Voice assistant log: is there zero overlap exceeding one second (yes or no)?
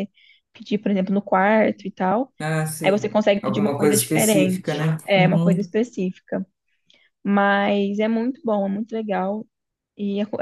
no